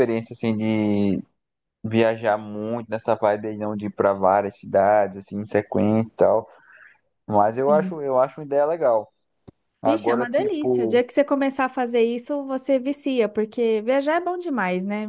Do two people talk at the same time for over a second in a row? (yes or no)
yes